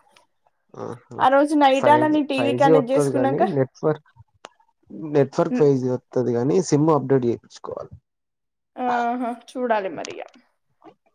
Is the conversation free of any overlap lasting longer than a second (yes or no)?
no